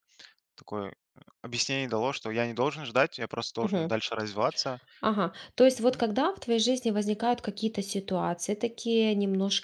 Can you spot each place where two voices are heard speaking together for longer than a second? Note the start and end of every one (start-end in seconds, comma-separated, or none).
none